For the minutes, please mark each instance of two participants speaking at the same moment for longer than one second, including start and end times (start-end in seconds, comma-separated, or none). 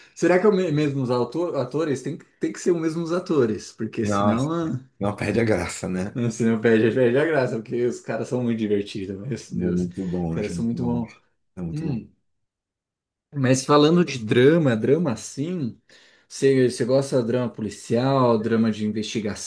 9.7-11.0